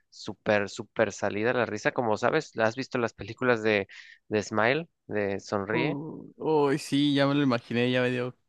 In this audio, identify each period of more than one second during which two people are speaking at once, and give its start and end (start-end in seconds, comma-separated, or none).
none